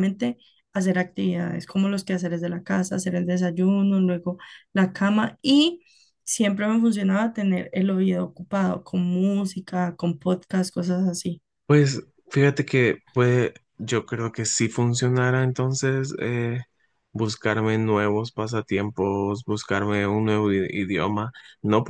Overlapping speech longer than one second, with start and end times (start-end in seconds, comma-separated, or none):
none